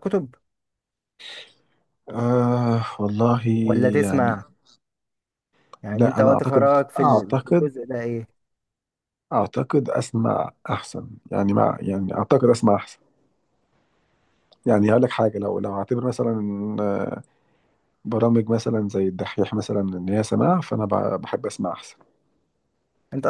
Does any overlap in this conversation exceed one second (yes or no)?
yes